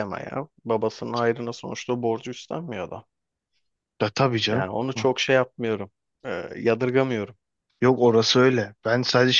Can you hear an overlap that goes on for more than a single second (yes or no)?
no